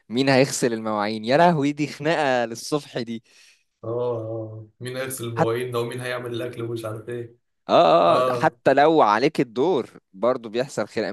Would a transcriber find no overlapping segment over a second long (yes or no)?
yes